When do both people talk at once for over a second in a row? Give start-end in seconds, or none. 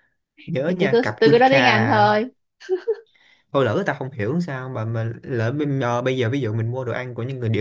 0.7-2.1